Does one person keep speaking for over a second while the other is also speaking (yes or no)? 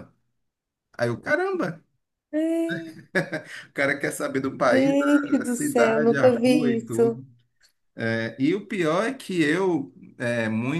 yes